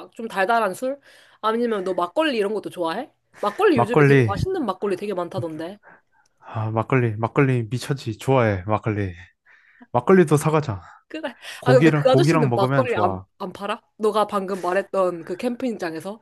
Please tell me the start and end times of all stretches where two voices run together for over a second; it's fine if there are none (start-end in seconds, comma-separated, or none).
11.6-13.3